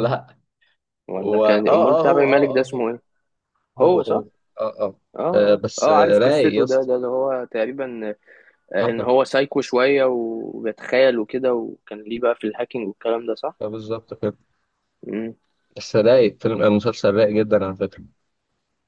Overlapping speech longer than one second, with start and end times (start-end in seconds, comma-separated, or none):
1.2-2.8, 5.2-6.9